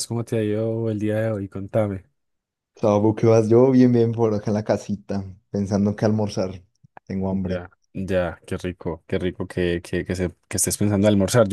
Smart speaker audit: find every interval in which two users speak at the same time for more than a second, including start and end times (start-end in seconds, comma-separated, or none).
none